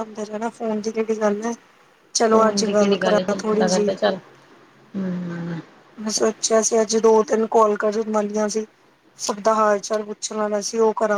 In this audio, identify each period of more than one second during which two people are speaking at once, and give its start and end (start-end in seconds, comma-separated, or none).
2.3-3.9